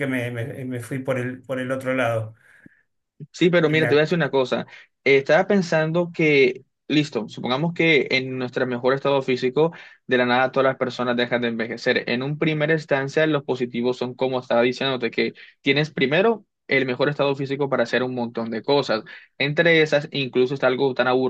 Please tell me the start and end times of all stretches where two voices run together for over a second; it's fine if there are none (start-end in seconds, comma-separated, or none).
none